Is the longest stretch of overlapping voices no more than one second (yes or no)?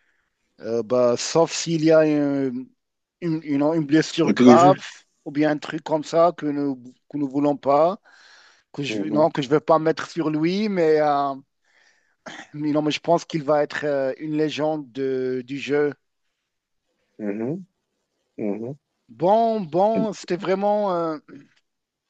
yes